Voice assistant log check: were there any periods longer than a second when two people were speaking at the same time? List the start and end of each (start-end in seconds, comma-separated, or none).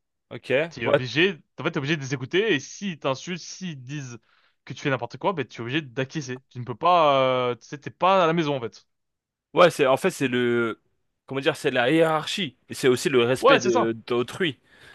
none